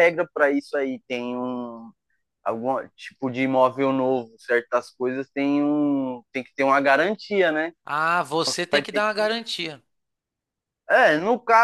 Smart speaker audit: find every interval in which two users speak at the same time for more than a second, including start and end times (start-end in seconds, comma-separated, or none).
none